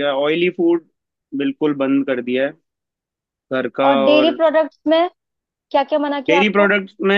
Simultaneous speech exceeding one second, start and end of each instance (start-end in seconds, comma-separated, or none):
none